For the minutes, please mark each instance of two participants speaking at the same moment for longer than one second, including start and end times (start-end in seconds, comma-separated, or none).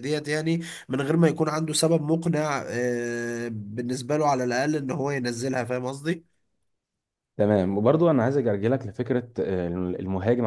none